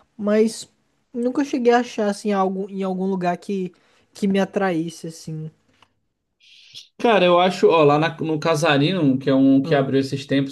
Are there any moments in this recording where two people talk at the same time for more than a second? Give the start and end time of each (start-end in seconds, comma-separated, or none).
none